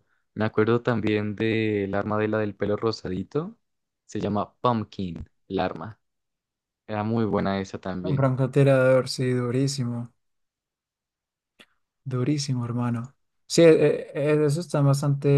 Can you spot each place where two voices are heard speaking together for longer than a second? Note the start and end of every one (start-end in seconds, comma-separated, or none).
none